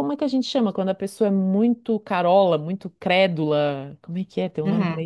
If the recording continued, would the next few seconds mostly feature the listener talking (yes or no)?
yes